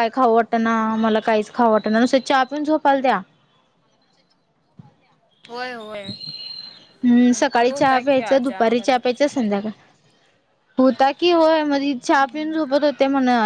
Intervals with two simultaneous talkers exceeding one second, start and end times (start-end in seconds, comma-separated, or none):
7.3-9.2